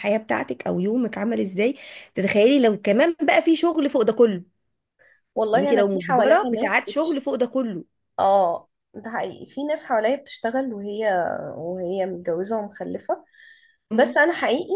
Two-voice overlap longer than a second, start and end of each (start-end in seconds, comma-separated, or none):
5.5-7.2